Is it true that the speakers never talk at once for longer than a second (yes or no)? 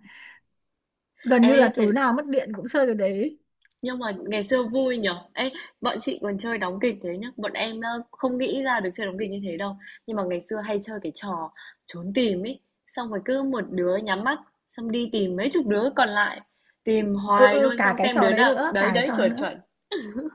no